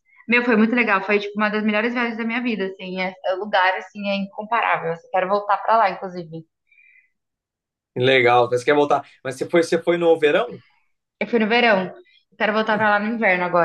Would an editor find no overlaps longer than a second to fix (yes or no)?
yes